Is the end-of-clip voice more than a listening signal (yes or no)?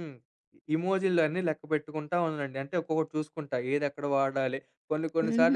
yes